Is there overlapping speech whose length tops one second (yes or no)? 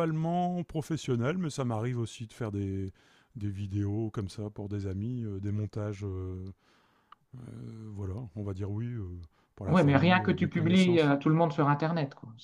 yes